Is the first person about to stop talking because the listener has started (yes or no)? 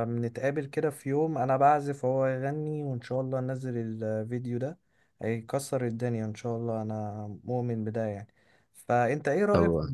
no